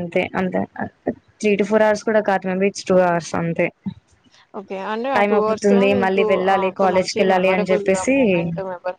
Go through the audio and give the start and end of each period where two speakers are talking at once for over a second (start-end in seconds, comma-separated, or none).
5.2-8.2